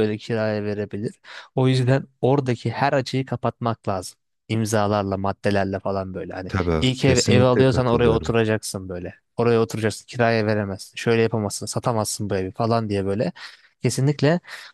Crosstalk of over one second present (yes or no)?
yes